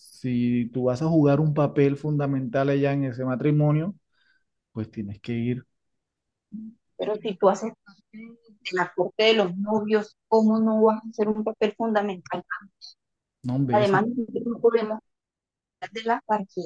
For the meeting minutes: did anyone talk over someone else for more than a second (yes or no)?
no